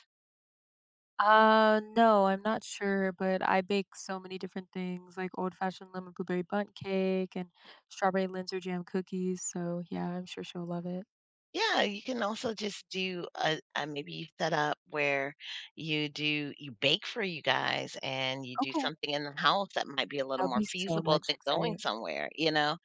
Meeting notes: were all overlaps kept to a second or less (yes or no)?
no